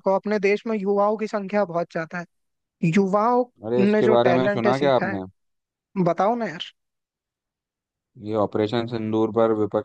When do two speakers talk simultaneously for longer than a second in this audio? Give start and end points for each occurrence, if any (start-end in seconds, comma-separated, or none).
3.9-5.2